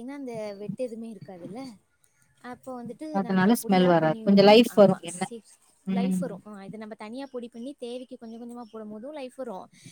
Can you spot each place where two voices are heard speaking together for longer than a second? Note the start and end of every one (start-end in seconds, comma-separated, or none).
3.2-5.2